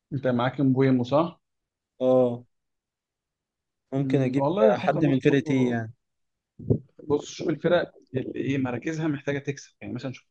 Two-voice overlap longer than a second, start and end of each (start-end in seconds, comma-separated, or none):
4.0-5.8